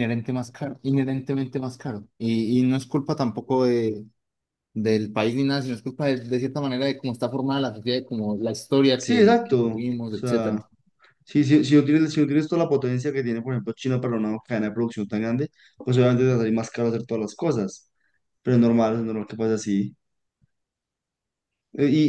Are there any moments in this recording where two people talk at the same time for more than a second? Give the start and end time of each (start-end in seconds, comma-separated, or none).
8.9-10.6